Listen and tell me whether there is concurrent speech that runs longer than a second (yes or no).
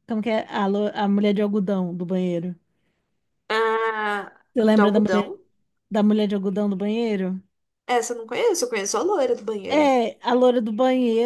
no